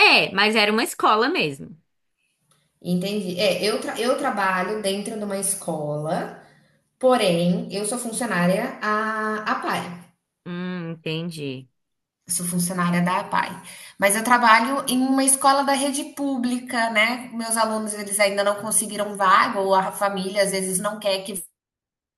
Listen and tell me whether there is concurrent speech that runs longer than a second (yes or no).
no